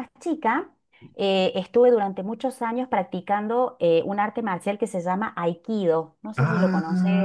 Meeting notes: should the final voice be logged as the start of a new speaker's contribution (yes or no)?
yes